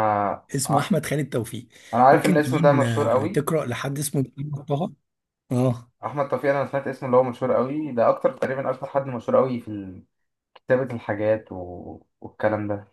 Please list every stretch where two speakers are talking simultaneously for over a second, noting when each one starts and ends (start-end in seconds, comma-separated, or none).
2.1-3.5